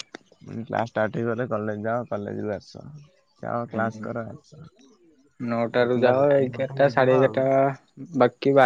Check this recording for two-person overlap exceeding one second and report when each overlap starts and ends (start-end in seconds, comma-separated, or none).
5.8-7.4